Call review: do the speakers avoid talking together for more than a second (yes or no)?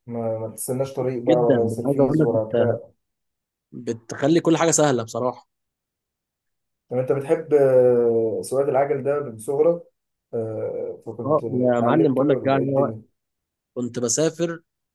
no